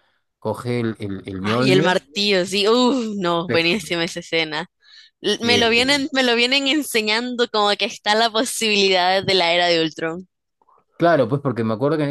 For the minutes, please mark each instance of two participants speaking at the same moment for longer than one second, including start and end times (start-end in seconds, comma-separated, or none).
none